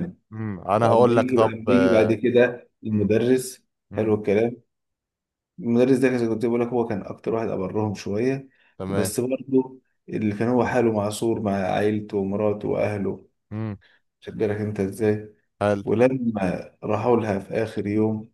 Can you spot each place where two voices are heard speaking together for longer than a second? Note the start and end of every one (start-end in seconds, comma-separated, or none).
0.8-2.1